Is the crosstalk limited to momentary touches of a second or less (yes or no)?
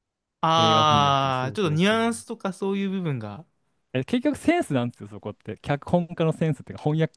no